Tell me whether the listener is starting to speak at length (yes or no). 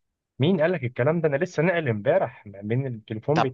no